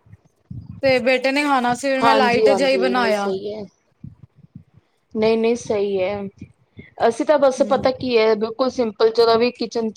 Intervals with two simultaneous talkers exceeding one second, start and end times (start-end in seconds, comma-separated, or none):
2.0-3.3